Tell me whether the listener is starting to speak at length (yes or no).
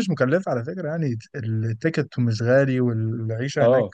no